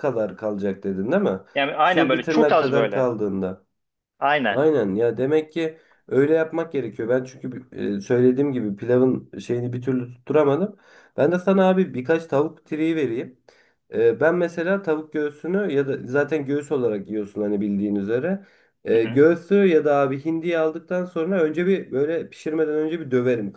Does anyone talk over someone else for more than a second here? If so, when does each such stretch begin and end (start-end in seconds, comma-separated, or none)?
1.8-3.1